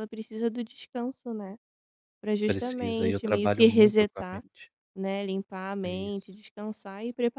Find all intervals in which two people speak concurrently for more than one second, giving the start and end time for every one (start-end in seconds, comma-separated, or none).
2.5-4.4